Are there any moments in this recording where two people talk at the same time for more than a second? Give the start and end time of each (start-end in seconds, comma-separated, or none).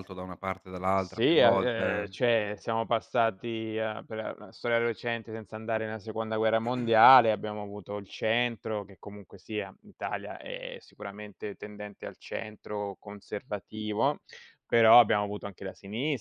1.0-2.2